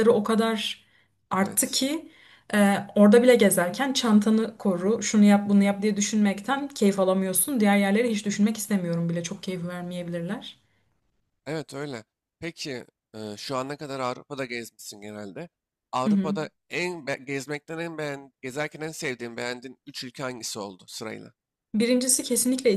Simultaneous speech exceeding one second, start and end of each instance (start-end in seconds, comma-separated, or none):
none